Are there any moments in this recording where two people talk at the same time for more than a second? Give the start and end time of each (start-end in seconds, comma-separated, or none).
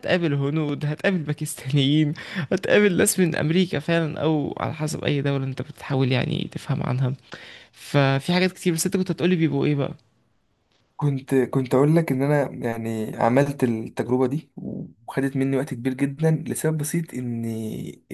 none